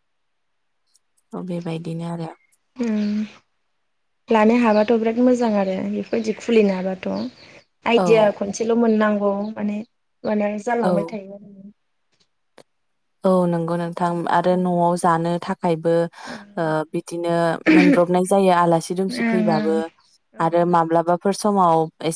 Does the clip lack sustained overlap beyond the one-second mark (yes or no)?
yes